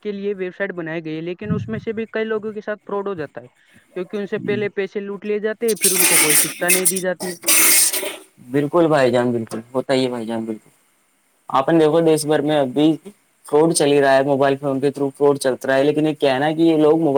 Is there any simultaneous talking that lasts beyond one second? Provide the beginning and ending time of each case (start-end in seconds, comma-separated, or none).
none